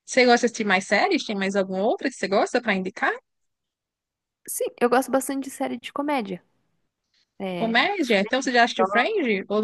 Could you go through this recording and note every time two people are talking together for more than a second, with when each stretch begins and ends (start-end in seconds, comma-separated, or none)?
none